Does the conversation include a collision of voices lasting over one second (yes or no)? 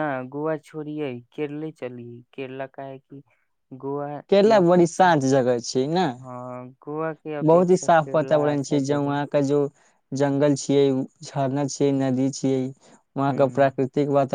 yes